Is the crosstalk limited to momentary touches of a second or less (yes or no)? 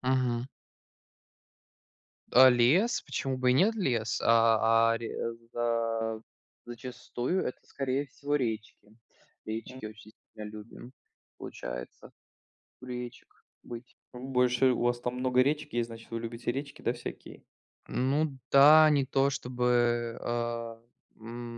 yes